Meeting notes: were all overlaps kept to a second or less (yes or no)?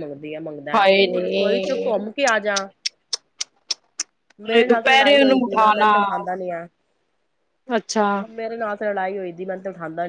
no